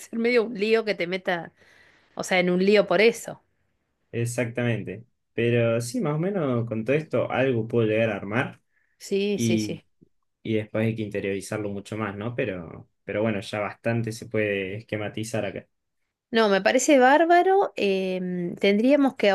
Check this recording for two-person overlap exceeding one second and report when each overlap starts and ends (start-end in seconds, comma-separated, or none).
none